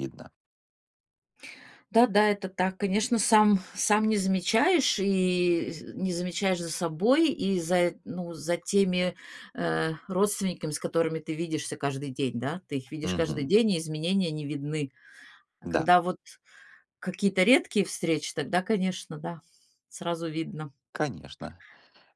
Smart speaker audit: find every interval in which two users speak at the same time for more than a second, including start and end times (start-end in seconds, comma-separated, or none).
none